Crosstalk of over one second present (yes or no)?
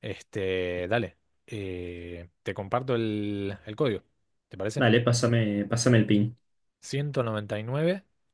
no